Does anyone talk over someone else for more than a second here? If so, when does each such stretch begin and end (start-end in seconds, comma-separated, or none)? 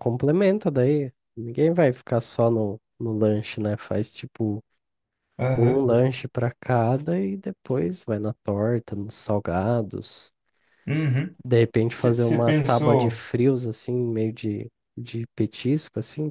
11.9-13.2